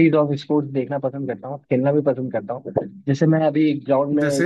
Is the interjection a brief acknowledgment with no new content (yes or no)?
yes